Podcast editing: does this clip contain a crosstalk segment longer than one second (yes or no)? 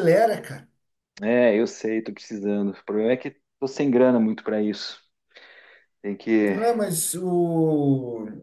no